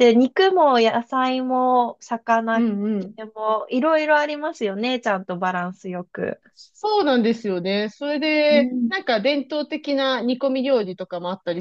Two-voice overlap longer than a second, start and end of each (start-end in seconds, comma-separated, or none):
none